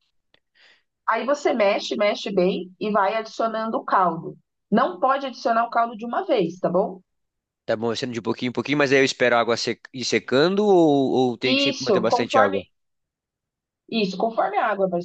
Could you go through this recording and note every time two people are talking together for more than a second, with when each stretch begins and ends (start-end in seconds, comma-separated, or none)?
11.4-12.7